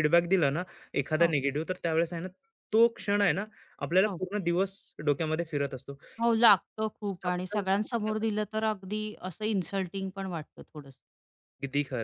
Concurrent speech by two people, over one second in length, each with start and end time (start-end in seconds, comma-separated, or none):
none